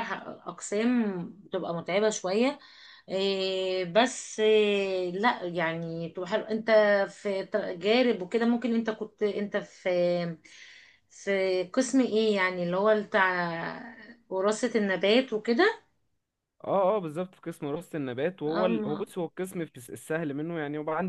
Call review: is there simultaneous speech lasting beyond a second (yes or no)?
no